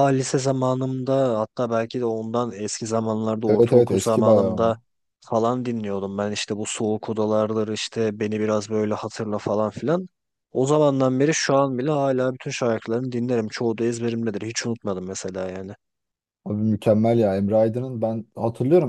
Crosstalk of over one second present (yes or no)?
yes